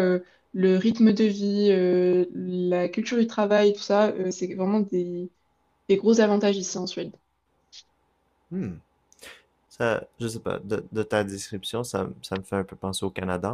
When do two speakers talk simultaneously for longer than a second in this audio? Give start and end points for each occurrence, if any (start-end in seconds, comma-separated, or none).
none